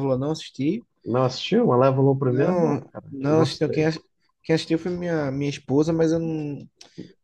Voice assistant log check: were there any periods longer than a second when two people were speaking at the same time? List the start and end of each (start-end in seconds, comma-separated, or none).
2.2-3.9